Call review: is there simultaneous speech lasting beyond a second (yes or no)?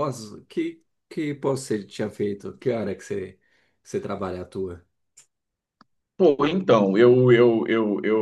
no